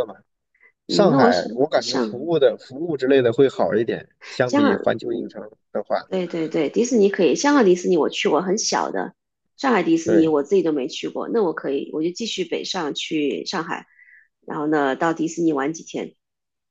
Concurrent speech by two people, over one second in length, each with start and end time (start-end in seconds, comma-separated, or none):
0.9-2.3